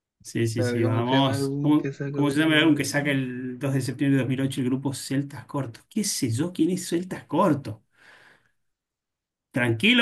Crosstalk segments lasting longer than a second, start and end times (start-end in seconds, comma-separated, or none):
0.5-3.1